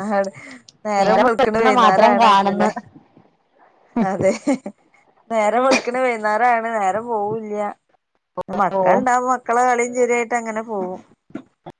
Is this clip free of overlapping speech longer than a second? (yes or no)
no